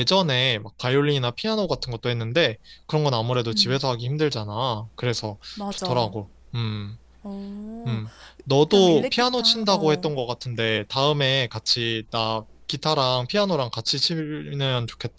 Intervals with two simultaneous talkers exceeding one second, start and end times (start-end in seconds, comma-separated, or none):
8.7-10.1